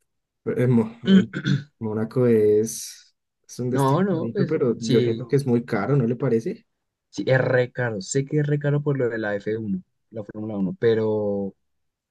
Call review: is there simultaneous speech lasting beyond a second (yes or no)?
yes